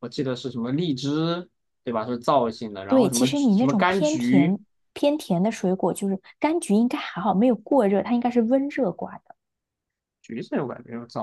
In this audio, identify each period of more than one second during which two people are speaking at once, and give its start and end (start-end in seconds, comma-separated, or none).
2.9-4.6